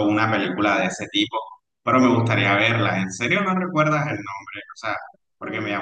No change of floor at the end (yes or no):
yes